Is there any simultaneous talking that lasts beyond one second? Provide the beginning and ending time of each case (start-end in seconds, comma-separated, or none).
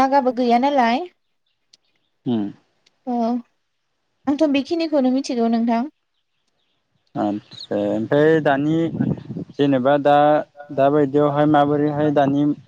none